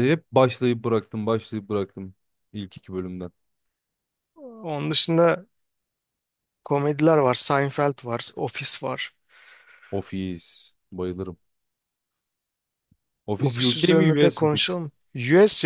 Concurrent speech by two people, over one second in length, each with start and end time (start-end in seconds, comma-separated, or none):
13.4-14.7